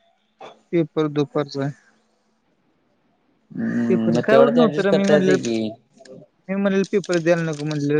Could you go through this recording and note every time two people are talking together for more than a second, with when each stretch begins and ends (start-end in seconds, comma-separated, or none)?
3.9-5.5